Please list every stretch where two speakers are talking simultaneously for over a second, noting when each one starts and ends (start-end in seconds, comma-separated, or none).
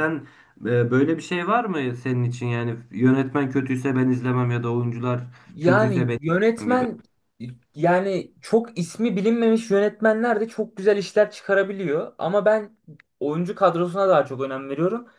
5.6-6.8